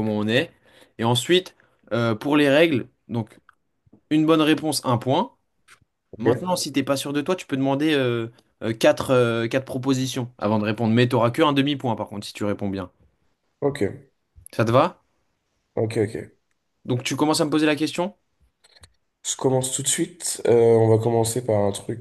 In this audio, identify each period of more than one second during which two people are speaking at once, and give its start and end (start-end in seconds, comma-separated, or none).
none